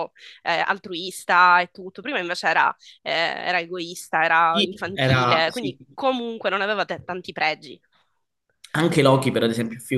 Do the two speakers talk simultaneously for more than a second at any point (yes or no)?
yes